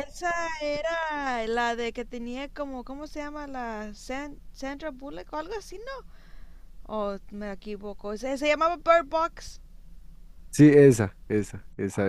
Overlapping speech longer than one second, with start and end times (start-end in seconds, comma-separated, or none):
none